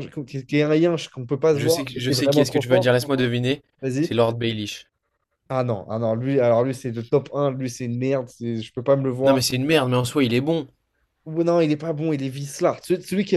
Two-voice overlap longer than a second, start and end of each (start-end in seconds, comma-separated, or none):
1.5-2.9